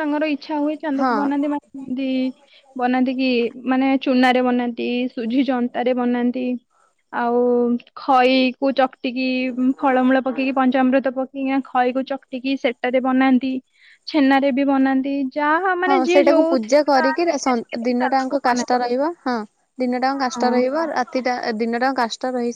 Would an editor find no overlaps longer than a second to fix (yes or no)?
no